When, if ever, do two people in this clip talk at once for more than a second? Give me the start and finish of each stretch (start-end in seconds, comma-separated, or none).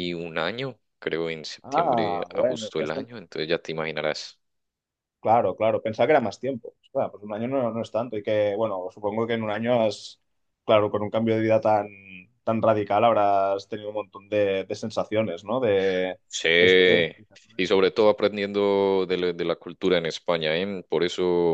1.6-3.1